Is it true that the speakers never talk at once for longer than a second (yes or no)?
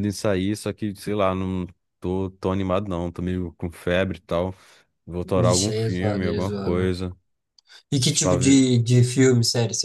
no